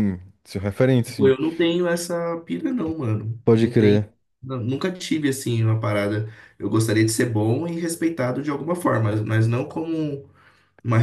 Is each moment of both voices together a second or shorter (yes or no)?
yes